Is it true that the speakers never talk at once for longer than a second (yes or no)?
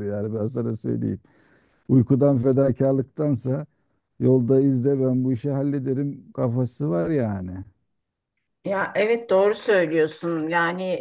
yes